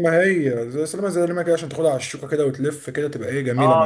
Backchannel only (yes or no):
no